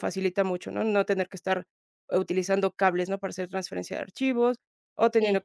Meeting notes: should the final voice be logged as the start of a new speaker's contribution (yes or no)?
no